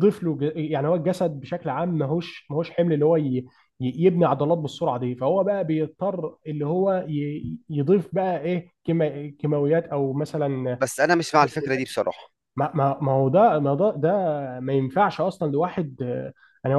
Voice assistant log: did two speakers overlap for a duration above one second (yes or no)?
no